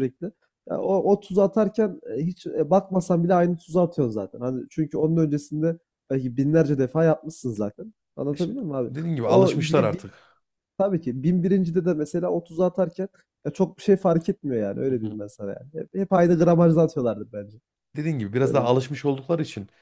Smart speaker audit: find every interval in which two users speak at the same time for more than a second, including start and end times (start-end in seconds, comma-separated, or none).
8.3-10.0